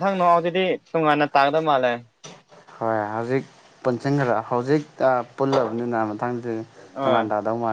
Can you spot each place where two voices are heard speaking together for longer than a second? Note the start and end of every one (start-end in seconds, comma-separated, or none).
none